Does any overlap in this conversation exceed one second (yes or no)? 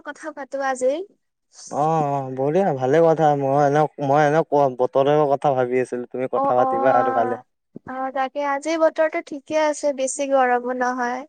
no